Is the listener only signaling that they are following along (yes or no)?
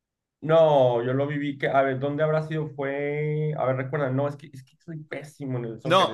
no